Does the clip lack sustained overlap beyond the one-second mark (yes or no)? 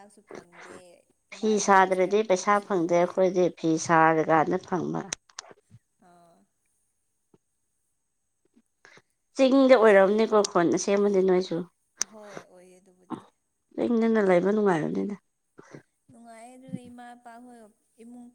no